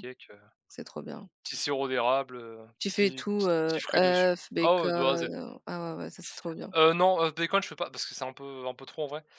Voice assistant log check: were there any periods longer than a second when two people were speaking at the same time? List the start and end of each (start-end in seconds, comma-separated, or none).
2.8-5.3